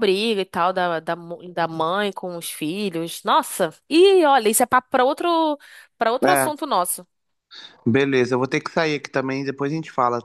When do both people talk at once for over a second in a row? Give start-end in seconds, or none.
none